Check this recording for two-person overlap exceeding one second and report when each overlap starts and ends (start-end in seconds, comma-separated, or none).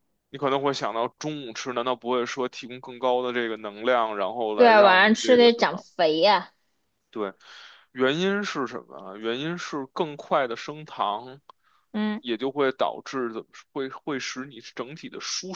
4.5-5.8